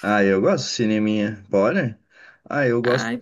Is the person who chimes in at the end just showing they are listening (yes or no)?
yes